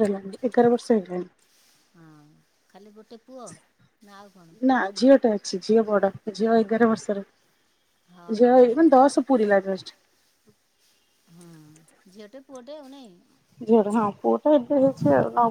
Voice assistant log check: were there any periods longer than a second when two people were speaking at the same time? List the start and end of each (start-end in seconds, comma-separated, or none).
none